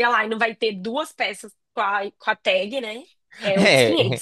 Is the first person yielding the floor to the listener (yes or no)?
yes